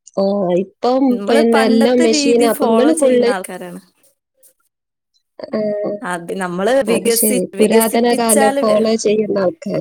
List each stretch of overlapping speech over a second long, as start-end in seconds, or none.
7.0-8.6